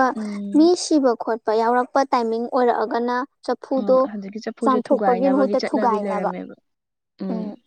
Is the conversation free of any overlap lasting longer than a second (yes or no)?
no